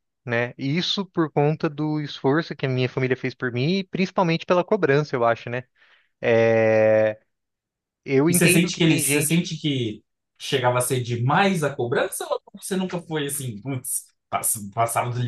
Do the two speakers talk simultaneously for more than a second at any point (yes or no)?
yes